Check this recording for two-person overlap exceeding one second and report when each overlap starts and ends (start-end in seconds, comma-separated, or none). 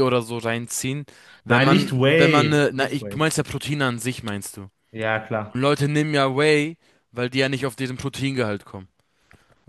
1.5-3.2